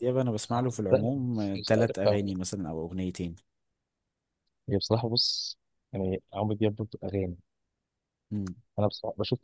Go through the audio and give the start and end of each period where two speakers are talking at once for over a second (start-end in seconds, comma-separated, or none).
0.5-2.4